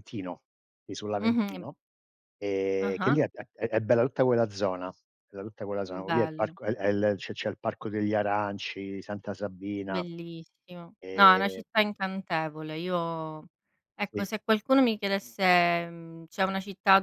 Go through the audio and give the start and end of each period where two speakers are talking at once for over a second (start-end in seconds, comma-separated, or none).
none